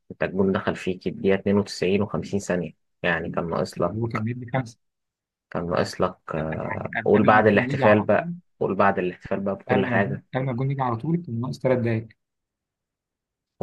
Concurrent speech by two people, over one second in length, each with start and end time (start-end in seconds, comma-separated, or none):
7.0-8.3